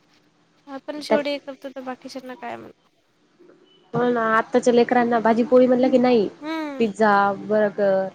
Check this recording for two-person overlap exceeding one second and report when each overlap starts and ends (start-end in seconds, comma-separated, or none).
none